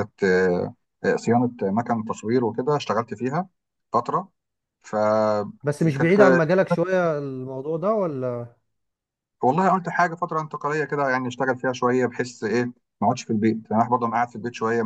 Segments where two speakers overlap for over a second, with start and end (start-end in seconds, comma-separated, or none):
none